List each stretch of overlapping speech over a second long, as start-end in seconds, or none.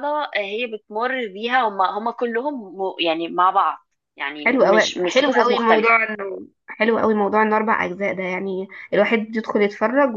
4.4-5.9